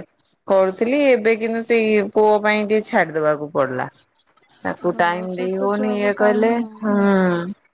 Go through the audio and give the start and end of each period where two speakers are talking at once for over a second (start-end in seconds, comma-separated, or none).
4.9-6.9